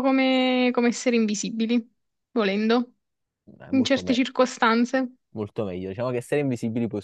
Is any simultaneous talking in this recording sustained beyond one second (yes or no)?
no